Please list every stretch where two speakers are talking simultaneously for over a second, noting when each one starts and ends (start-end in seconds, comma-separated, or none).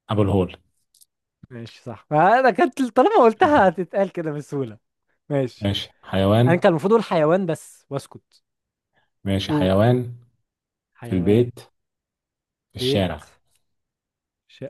none